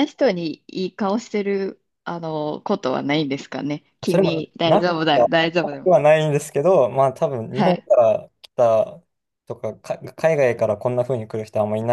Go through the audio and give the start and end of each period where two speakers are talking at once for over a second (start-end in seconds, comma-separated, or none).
4.1-6.0